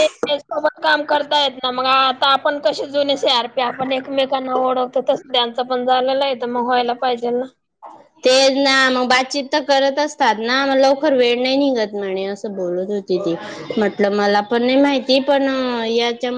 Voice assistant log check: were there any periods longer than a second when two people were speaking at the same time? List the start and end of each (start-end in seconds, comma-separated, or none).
none